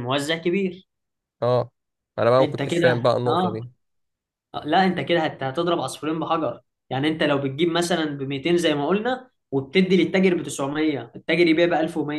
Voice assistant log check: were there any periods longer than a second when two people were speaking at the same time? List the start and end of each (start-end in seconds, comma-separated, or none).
2.4-3.6